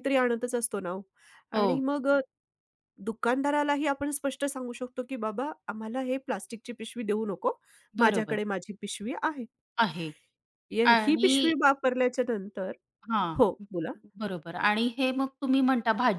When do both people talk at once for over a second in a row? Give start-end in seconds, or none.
none